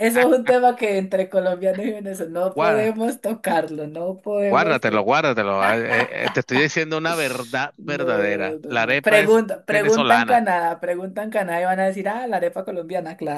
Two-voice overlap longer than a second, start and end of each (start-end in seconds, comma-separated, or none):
7.8-10.4